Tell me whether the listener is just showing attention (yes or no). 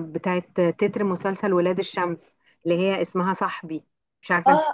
no